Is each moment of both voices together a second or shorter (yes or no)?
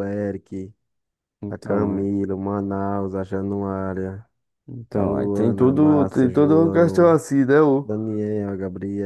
no